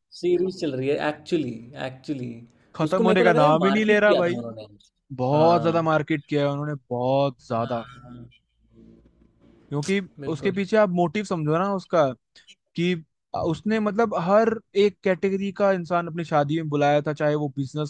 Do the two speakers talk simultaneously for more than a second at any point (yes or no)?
yes